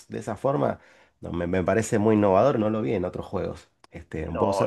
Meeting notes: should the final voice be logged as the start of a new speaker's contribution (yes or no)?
yes